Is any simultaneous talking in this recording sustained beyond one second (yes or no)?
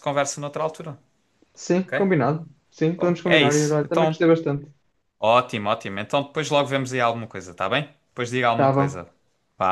yes